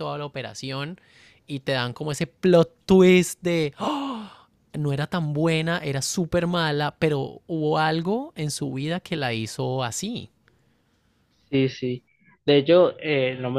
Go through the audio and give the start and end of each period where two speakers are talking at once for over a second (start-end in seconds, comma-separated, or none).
none